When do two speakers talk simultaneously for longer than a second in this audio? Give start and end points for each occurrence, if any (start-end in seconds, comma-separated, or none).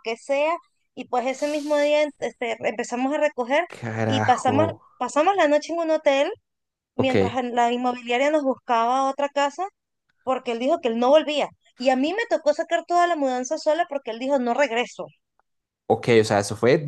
none